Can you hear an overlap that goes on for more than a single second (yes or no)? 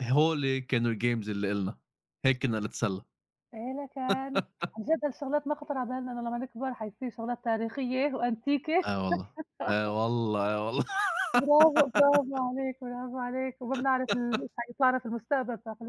no